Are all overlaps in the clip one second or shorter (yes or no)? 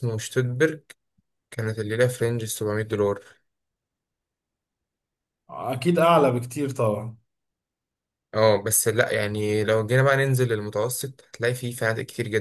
yes